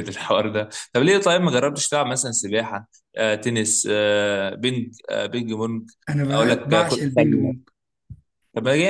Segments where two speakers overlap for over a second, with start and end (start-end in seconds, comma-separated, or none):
6.3-7.5